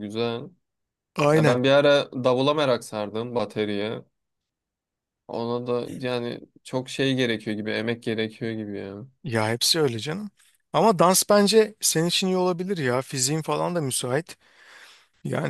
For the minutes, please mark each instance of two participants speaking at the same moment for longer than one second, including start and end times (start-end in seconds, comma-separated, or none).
none